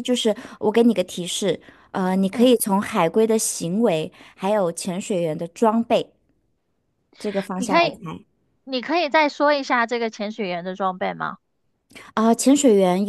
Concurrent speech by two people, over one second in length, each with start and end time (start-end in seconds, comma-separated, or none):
none